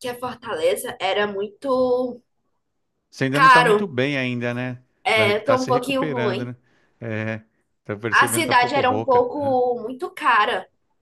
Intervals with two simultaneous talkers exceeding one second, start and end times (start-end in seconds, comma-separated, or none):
5.0-6.5, 8.1-9.6